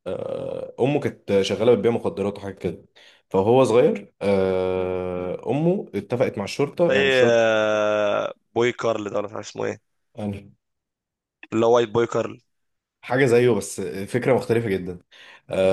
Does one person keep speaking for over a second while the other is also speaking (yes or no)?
no